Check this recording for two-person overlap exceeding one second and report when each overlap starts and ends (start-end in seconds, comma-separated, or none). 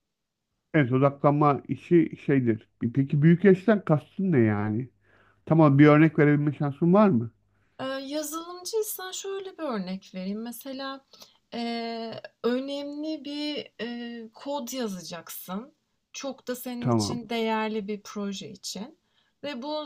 none